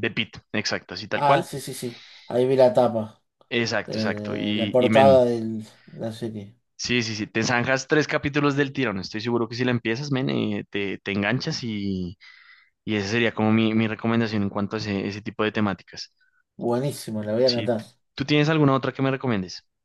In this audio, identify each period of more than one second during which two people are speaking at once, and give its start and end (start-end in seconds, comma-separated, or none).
3.9-5.2